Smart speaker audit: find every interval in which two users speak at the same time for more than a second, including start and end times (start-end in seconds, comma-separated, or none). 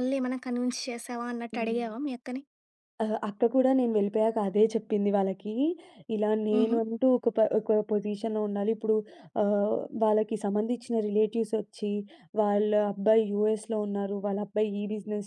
none